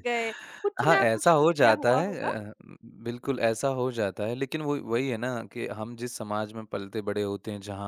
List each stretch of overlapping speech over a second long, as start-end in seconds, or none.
0.8-2.3